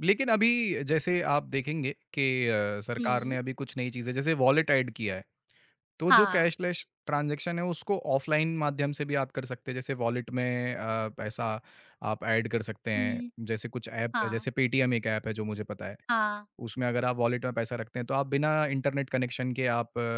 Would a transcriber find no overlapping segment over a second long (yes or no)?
yes